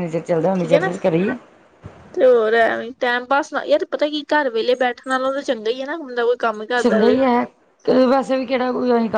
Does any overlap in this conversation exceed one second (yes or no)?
no